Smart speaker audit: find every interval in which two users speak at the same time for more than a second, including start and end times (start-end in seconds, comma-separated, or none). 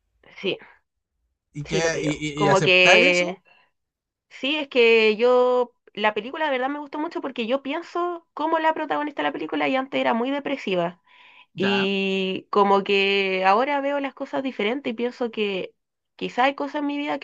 1.6-3.4